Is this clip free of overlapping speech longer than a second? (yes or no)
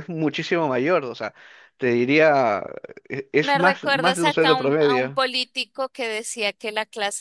no